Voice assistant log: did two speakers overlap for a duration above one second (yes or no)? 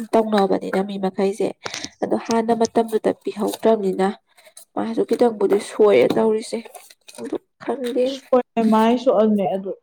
no